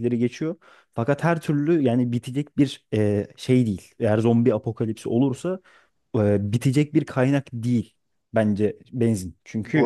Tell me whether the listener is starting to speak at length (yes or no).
yes